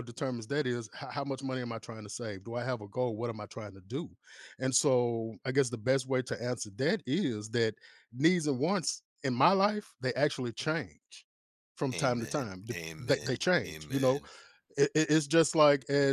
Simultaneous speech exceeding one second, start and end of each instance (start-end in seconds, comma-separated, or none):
11.9-14.2